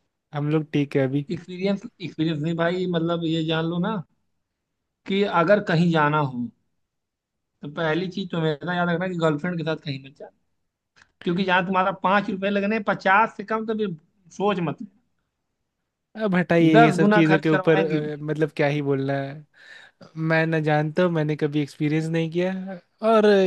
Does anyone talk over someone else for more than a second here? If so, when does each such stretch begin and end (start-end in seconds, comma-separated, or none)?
16.6-18.0